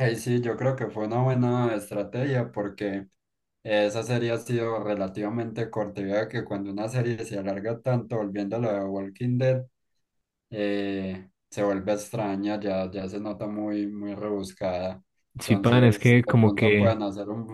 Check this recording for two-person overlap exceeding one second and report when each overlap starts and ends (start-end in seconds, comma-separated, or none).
15.5-17.0